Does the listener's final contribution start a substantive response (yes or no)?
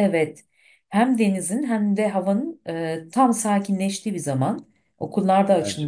no